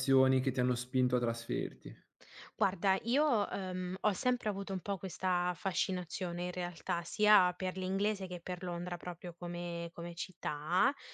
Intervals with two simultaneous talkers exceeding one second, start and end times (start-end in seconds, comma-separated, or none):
none